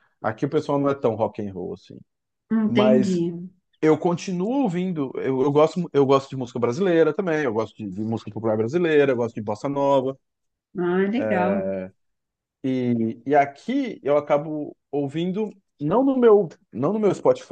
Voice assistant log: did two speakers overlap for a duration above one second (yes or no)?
no